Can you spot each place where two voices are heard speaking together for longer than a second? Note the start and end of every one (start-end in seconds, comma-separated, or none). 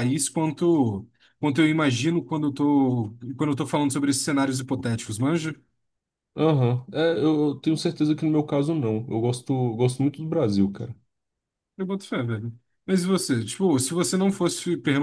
none